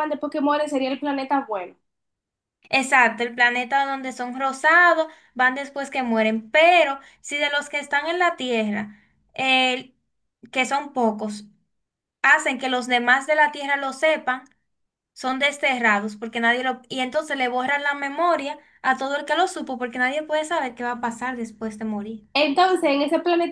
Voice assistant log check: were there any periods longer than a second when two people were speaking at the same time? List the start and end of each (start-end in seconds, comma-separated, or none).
none